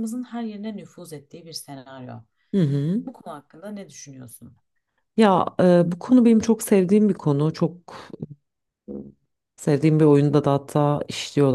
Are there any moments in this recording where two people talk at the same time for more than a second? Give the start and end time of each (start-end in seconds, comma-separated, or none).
none